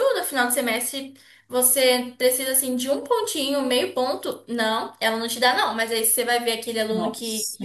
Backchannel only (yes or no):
yes